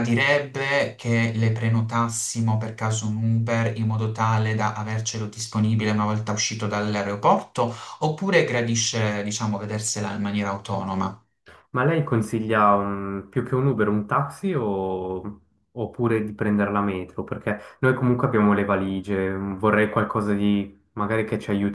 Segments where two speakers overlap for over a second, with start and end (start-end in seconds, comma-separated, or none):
none